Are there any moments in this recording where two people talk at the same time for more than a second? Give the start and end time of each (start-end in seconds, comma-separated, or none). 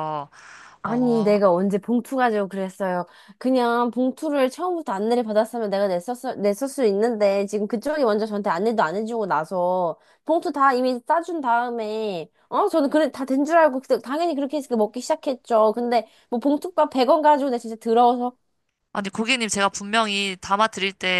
none